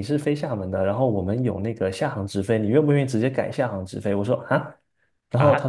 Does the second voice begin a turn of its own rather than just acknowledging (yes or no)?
no